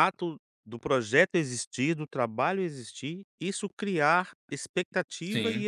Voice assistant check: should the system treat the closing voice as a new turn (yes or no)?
no